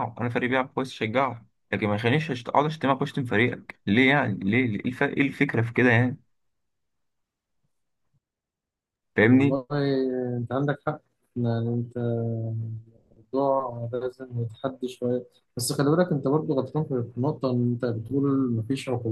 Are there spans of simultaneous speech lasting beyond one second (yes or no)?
no